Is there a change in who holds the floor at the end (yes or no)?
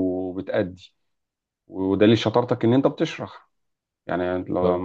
no